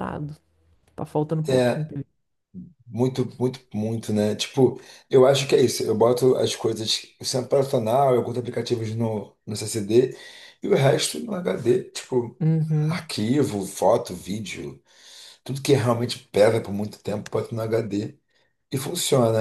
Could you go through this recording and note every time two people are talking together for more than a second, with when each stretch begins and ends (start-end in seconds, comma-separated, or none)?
none